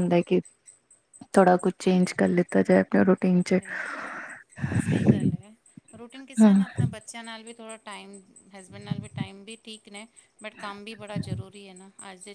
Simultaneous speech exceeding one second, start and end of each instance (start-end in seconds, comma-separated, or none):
none